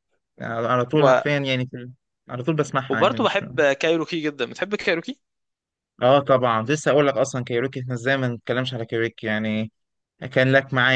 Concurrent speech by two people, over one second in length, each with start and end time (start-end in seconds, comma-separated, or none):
none